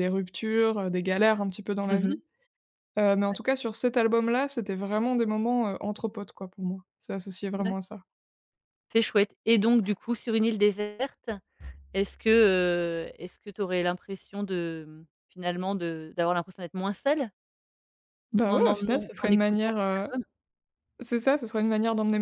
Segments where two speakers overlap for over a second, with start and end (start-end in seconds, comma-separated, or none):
18.5-20.1